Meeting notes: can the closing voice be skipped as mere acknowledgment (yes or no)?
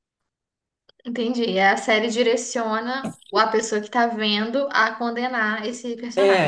no